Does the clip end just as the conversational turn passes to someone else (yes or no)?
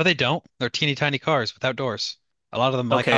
yes